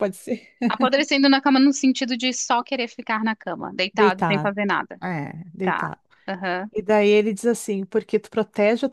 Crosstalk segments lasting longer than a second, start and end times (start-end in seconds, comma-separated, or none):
none